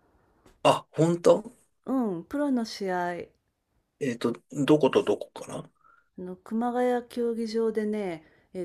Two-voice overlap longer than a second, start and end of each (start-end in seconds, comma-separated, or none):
none